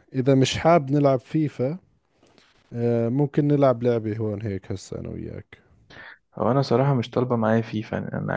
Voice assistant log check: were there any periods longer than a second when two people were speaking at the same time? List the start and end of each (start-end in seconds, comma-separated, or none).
none